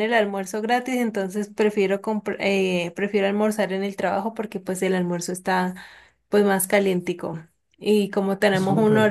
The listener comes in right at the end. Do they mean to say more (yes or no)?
no